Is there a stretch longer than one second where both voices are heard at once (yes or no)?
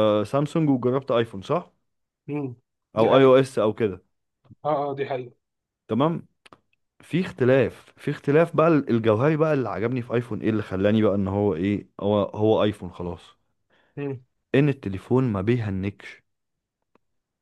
no